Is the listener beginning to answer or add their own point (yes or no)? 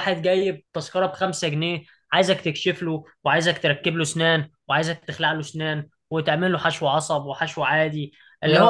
no